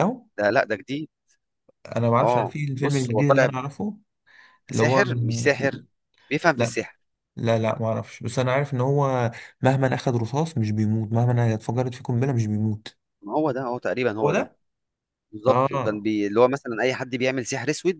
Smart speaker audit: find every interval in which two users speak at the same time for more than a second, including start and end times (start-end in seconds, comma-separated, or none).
2.2-3.5